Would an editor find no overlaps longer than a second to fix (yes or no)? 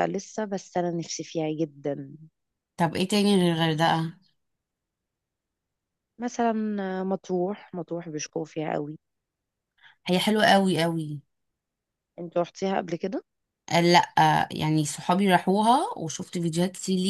yes